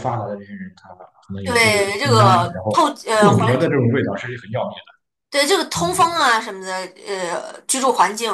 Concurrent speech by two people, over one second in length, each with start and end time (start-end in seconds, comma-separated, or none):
1.4-3.6